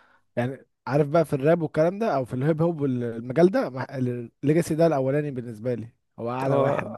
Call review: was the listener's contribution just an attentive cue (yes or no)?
no